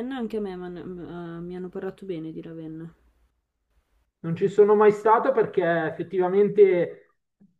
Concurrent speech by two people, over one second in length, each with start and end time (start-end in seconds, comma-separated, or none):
none